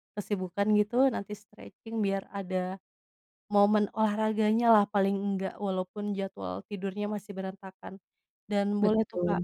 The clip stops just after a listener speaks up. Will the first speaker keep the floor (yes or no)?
yes